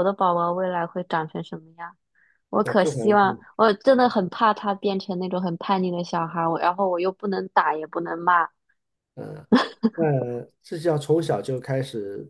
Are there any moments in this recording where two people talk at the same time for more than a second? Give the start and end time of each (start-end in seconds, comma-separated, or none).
none